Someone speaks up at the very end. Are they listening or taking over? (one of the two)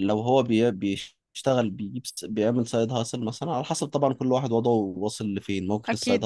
listening